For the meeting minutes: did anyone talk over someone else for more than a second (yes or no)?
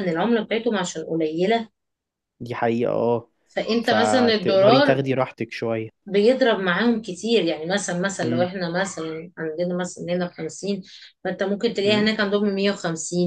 yes